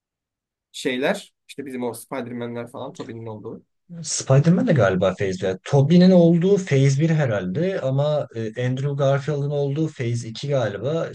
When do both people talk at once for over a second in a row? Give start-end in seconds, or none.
none